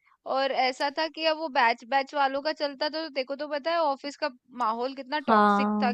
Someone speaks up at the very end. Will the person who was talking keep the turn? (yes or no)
yes